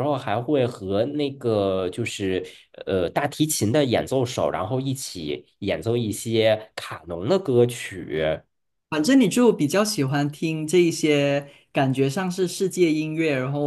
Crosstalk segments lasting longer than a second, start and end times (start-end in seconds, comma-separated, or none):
none